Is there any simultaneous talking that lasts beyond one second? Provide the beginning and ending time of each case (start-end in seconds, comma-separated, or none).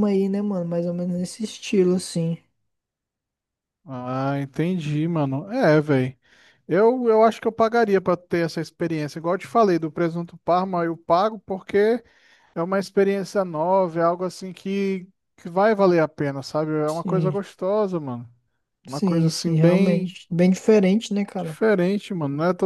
18.9-20.2